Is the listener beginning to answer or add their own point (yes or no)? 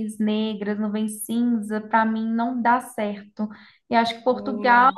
no